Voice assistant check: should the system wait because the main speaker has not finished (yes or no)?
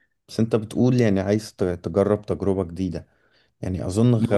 yes